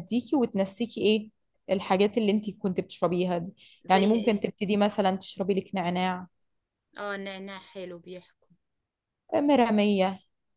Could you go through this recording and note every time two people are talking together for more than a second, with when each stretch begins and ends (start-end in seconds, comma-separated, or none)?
none